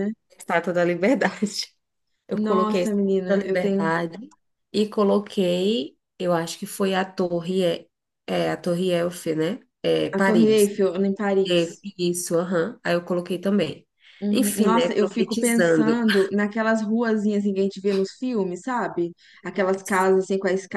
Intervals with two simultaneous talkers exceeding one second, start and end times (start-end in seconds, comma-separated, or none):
2.3-3.9, 14.3-16.0